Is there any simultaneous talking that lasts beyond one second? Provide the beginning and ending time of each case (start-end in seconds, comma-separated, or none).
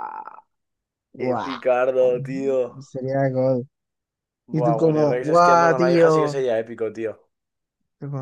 4.6-6.3